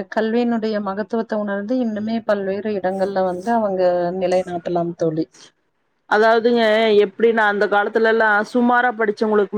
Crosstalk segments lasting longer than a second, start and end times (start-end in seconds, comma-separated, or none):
none